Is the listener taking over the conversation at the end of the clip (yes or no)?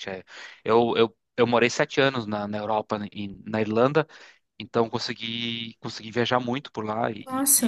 no